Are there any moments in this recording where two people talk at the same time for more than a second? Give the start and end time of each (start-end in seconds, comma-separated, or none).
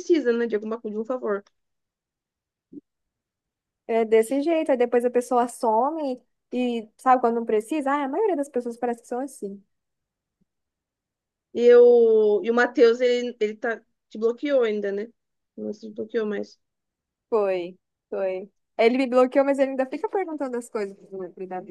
none